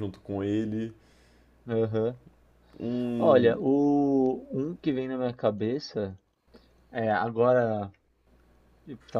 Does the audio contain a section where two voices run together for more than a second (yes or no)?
no